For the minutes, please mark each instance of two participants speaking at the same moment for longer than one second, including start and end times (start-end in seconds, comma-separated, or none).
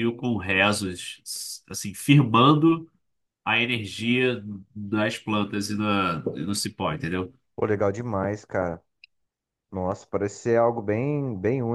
none